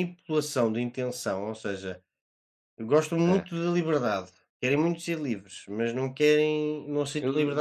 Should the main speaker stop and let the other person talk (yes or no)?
yes